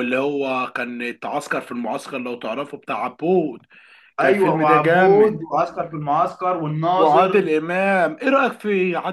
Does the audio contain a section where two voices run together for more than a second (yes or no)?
yes